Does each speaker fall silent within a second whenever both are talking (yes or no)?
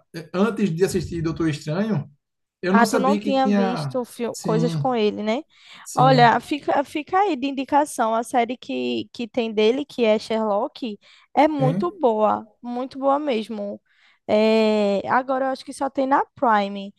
no